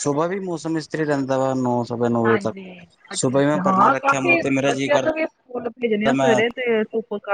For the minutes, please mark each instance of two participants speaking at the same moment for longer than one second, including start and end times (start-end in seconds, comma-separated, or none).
3.2-5.2